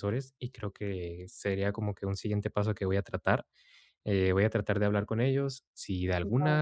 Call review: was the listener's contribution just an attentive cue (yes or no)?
yes